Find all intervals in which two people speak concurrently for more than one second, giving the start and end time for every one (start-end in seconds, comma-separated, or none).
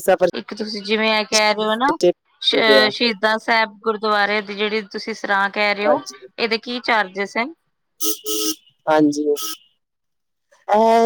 none